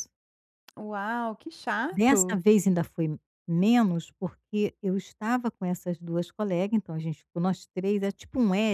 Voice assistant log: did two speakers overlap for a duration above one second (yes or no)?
no